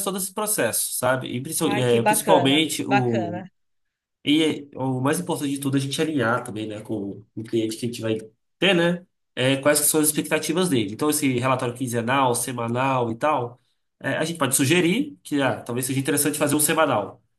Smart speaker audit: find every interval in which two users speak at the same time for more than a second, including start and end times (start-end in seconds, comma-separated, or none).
1.6-3.4